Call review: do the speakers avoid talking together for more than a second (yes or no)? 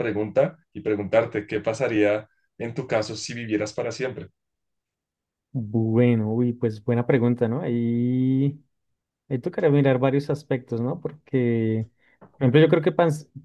yes